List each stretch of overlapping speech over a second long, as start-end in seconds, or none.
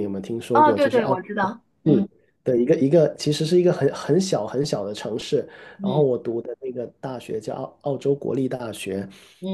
0.5-2.1